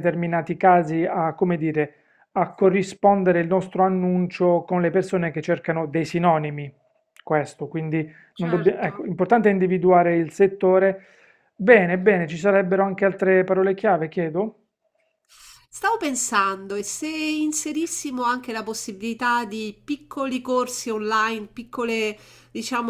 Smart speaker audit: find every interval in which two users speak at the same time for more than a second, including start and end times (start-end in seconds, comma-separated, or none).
none